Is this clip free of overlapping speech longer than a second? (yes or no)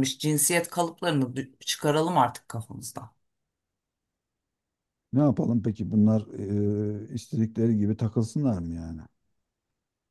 yes